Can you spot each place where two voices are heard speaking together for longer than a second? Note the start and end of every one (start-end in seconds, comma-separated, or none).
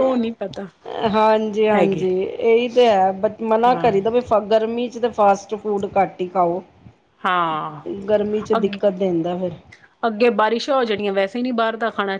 none